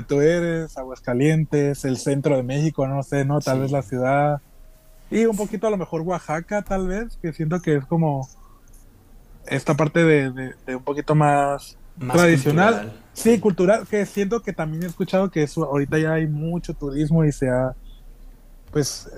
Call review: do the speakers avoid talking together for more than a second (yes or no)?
no